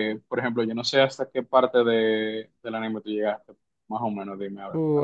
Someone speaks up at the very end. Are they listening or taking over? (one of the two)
taking over